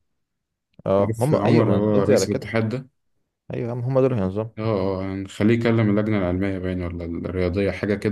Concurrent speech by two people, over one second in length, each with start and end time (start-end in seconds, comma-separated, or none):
1.0-2.4